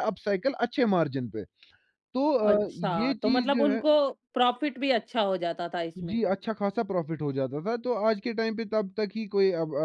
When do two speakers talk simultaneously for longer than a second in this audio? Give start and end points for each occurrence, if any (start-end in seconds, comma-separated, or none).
2.4-3.8